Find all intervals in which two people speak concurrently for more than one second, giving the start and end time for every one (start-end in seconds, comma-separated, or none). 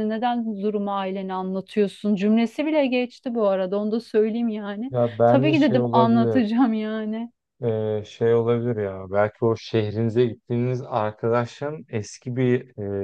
4.9-6.4